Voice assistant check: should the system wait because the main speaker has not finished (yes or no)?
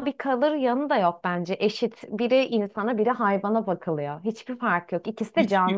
no